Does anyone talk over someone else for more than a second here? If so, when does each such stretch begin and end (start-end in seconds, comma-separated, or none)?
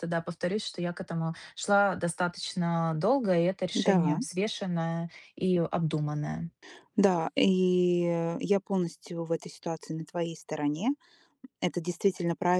none